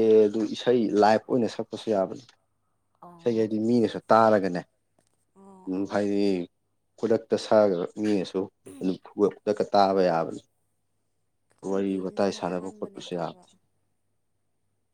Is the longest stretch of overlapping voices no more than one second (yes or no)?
no